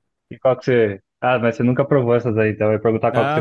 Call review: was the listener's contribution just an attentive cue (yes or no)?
no